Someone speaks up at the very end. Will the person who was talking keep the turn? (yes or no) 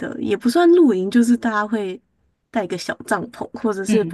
yes